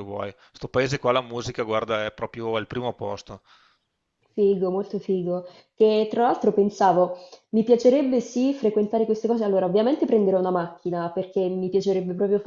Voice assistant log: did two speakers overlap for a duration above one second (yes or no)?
no